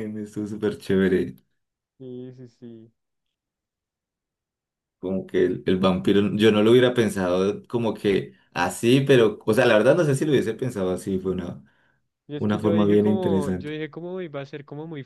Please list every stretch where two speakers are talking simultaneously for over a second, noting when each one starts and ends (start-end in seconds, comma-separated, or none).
12.3-13.7